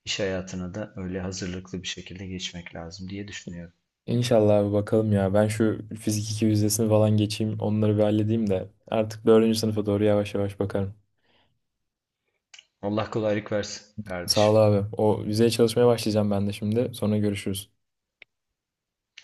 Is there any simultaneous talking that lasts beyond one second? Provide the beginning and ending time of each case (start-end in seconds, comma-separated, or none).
none